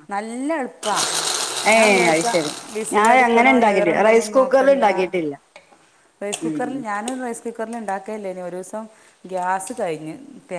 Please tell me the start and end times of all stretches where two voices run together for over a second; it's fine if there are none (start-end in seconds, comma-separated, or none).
2.9-4.8